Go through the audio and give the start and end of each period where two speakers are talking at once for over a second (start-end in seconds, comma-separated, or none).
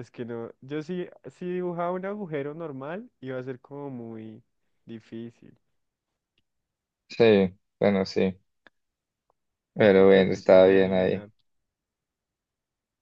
9.8-11.3